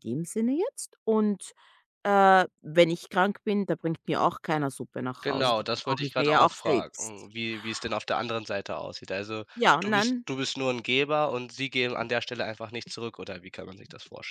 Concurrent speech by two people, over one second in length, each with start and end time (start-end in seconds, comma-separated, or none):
5.2-7.3